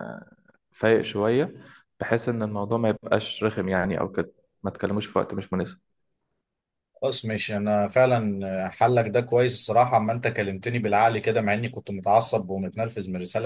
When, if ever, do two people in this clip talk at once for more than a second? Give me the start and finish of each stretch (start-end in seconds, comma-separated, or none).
none